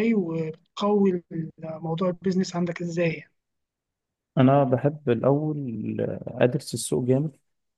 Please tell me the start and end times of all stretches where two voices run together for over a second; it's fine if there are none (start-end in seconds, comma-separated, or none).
none